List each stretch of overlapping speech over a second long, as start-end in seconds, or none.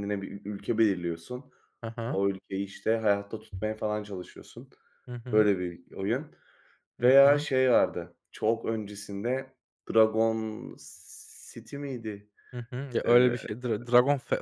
none